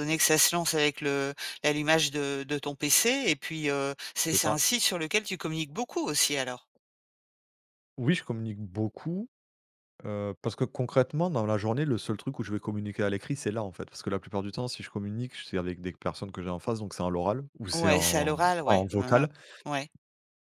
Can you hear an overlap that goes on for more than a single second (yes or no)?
yes